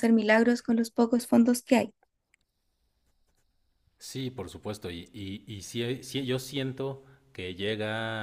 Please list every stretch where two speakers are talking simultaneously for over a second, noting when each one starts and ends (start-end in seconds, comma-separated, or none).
none